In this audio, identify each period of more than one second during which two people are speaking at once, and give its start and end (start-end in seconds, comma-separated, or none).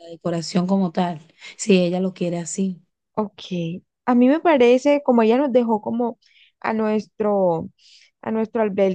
none